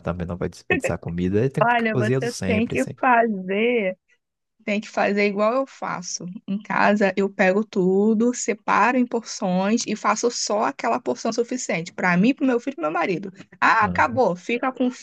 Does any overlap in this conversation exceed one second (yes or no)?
yes